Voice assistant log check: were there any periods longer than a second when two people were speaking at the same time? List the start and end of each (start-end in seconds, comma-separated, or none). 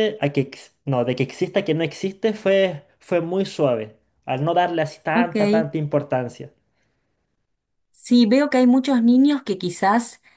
none